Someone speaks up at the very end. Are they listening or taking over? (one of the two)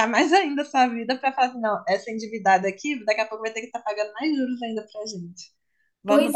taking over